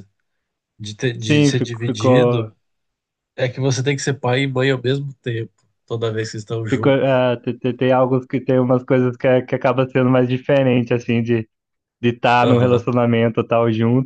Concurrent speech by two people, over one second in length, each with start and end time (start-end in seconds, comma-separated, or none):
1.2-2.5